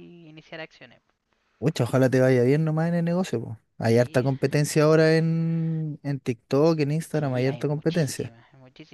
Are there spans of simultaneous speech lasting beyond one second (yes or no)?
yes